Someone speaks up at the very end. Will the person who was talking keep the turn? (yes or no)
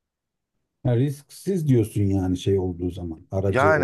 no